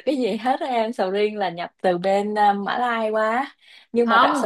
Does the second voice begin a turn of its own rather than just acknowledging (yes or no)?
yes